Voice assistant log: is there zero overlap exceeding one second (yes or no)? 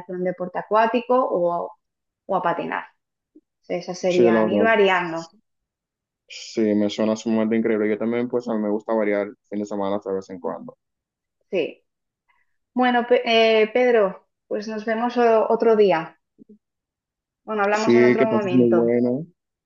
no